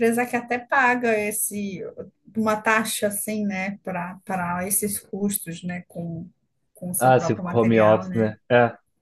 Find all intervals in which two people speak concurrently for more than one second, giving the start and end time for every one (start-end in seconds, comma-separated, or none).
7.0-8.3